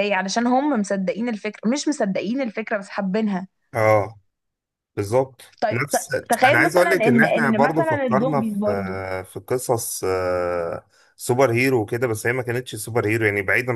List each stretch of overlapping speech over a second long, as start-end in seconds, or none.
5.6-8.6